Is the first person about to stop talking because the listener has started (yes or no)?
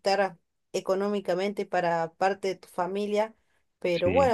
no